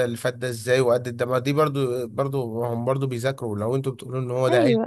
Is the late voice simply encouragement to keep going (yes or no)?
no